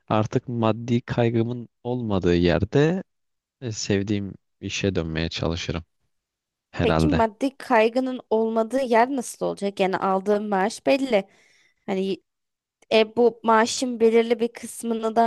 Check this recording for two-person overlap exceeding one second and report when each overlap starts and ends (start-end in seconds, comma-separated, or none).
none